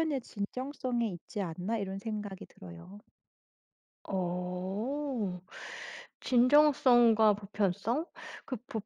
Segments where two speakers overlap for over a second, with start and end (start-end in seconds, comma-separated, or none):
none